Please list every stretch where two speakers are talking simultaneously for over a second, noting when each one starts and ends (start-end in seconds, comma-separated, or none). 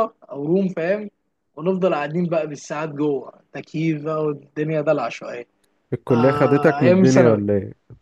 6.1-7.4